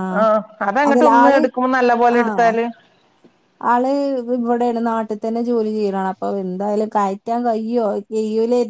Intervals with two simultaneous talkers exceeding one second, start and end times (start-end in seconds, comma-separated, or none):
none